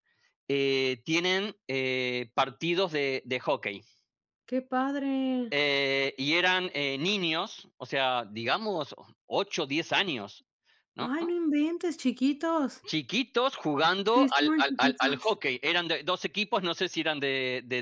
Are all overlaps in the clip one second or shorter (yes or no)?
no